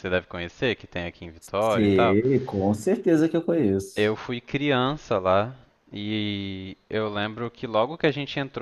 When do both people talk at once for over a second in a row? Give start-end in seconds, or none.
none